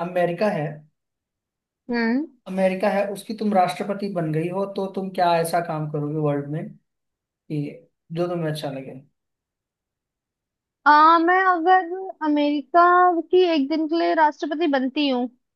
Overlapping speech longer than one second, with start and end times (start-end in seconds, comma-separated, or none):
none